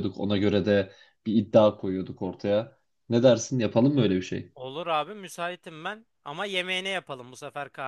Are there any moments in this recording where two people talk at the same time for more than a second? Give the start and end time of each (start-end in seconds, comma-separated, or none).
none